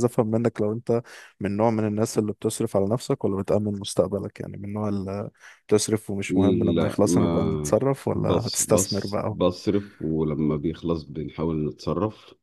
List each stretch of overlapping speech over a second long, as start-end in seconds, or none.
6.7-9.4